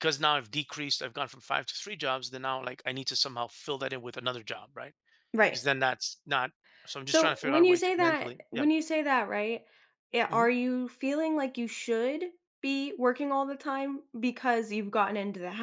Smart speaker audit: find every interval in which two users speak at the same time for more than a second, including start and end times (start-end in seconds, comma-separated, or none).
7.0-8.7